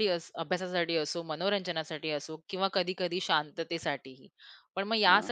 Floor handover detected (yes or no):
no